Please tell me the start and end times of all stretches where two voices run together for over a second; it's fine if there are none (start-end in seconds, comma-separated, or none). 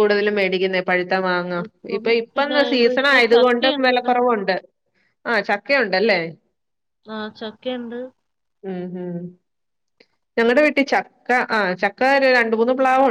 2.0-4.1